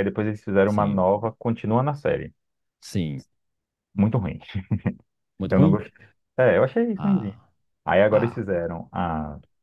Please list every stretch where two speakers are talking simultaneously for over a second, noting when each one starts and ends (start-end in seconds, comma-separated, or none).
none